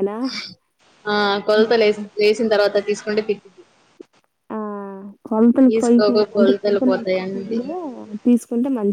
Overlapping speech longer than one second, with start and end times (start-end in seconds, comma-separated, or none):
5.7-7.6